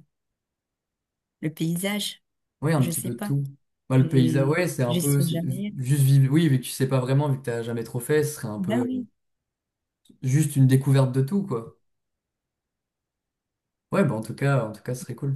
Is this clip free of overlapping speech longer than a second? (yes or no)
no